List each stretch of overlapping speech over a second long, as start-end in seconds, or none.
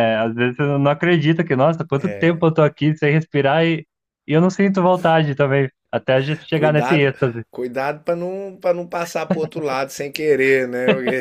none